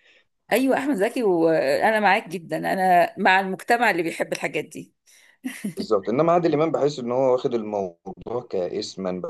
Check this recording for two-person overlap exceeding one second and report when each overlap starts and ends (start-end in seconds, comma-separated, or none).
none